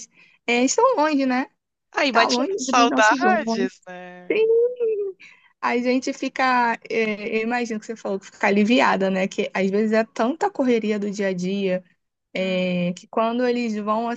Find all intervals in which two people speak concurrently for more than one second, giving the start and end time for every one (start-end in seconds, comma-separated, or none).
2.1-3.7